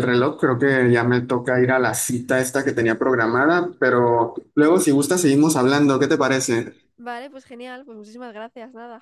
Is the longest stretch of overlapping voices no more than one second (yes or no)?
yes